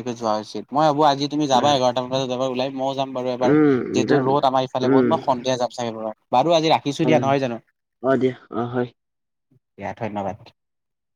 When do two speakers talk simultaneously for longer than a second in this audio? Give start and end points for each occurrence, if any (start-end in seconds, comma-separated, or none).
none